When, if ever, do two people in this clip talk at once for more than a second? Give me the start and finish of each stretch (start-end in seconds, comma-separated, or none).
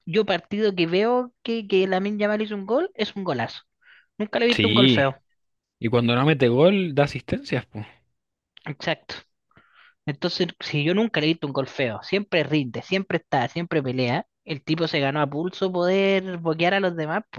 none